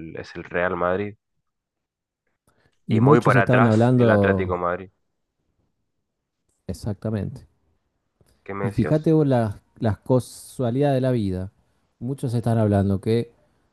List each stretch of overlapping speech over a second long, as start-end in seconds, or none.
2.9-4.6